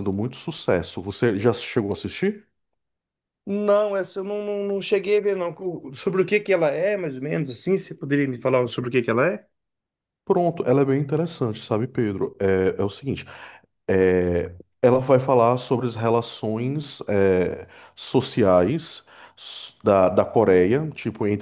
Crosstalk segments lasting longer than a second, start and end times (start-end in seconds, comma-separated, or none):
none